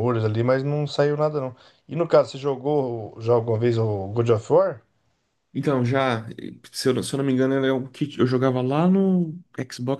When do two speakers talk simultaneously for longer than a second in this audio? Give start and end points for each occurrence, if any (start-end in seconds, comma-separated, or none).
none